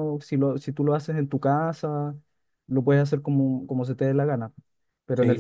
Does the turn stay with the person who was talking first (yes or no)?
no